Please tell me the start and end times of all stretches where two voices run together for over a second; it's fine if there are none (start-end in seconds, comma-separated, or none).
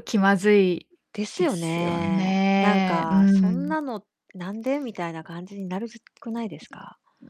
1.4-3.8